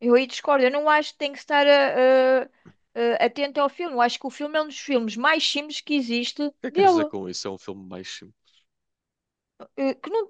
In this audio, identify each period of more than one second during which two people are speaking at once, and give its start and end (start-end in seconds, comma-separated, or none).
none